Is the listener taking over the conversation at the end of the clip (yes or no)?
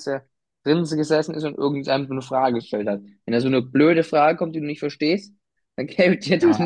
yes